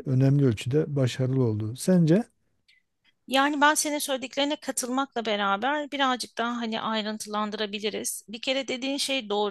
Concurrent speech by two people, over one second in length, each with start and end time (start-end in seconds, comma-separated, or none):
none